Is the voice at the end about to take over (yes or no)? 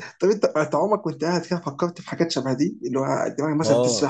yes